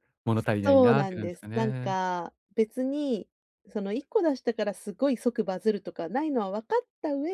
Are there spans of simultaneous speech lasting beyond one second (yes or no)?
yes